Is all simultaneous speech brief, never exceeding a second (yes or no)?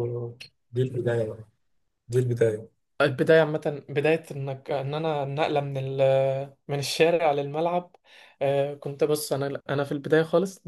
yes